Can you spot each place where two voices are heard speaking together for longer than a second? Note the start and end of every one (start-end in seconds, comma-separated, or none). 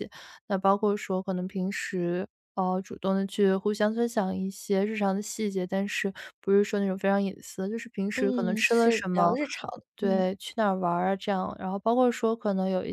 8.2-9.4